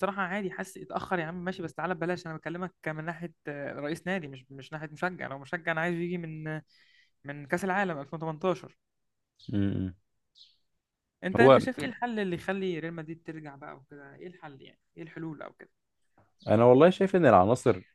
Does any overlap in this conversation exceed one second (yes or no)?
no